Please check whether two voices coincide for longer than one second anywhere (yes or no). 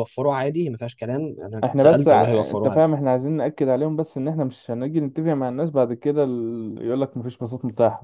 yes